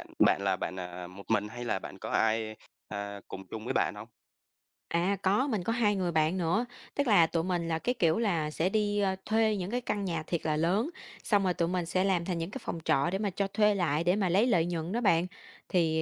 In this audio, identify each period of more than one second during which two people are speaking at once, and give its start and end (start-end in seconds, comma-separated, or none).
none